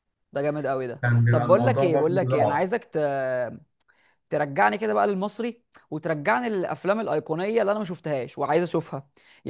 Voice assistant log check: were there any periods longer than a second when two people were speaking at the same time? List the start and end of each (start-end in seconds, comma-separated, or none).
1.0-2.7